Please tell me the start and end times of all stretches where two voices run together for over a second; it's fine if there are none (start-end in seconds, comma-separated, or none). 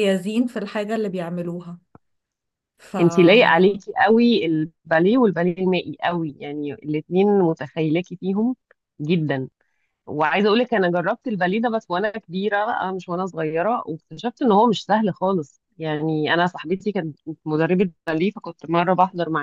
none